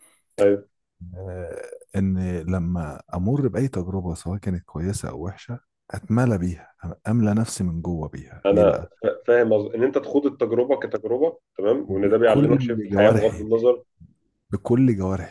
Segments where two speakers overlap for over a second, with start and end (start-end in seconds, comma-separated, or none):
11.9-13.5